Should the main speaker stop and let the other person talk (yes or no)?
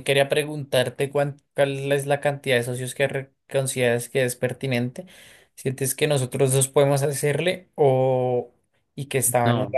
no